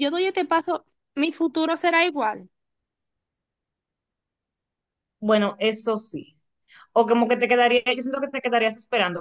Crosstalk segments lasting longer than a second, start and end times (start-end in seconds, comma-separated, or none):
none